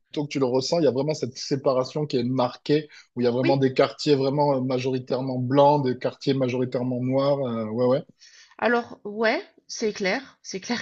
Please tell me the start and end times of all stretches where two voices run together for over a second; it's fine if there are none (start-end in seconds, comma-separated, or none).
none